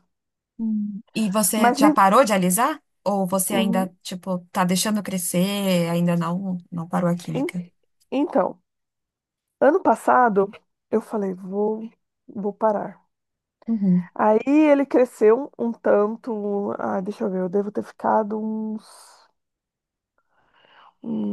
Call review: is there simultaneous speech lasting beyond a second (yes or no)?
no